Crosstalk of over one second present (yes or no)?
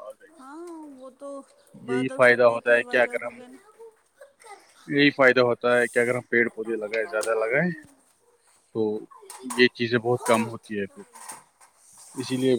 yes